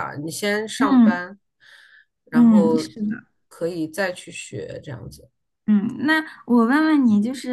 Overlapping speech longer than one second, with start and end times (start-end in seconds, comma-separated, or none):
none